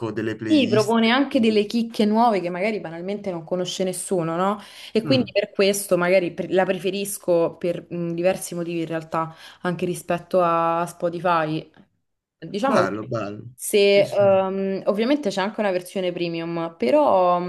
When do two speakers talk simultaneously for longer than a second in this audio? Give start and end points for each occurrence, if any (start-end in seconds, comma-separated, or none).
none